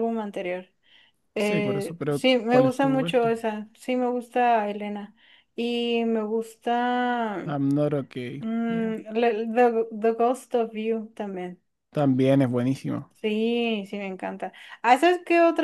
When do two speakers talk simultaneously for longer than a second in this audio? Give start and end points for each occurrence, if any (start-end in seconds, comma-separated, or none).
1.4-3.3